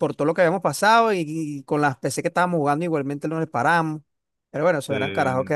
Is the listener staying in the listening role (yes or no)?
yes